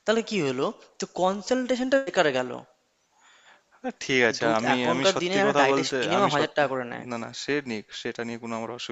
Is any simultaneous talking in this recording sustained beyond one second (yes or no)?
yes